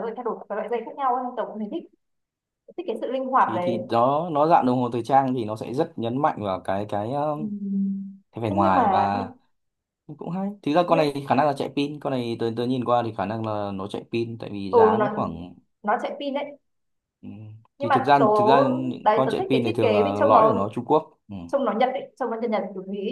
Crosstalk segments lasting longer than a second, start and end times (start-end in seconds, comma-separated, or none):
19.0-20.7